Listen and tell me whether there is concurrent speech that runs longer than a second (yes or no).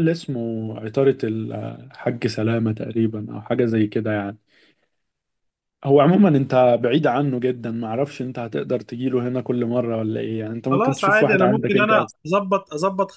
yes